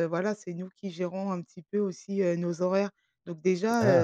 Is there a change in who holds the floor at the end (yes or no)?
no